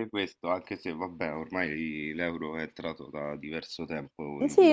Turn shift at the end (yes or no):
yes